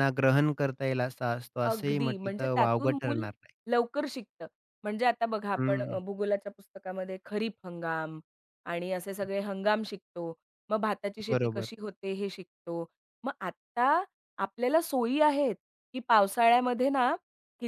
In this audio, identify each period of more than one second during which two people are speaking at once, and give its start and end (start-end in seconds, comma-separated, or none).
1.6-3.2